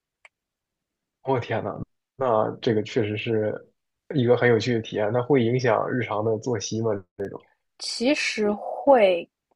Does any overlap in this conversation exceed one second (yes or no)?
no